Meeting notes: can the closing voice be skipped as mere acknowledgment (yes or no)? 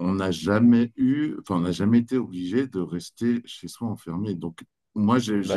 yes